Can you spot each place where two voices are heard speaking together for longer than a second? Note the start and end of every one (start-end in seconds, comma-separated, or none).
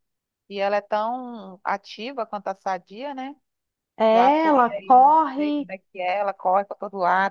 4.1-5.7